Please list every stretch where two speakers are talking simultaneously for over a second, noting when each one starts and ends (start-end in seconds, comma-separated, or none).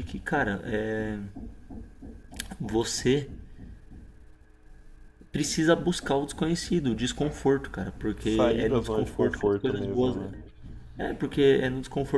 8.2-10.2